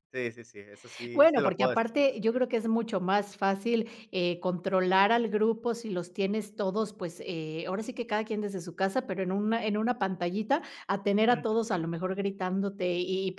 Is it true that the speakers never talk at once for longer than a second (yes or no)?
no